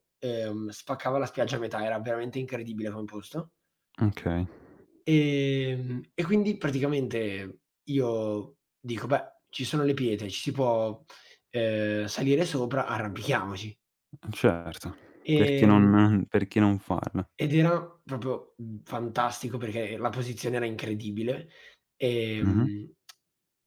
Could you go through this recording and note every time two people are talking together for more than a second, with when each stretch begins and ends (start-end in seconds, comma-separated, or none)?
none